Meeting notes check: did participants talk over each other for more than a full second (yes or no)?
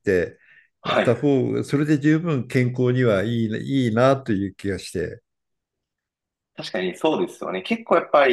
no